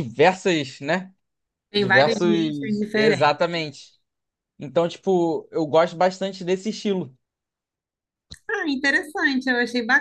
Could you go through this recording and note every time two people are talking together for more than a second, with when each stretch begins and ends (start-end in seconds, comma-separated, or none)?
1.8-3.4